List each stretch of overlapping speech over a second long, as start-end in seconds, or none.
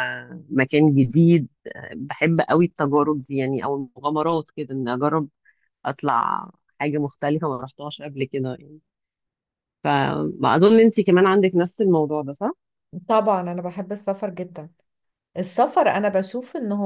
none